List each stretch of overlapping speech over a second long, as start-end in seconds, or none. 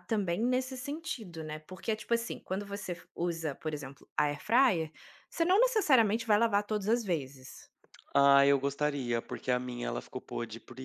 none